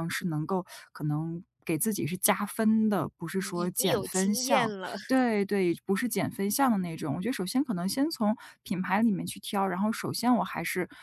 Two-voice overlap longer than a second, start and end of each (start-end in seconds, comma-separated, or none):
3.3-4.9